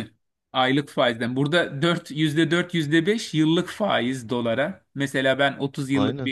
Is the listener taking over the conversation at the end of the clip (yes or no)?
no